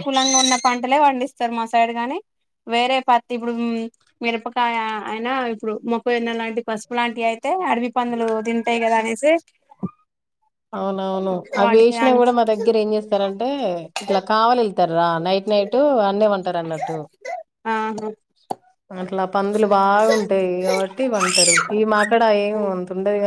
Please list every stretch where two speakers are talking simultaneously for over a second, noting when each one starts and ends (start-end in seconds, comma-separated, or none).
none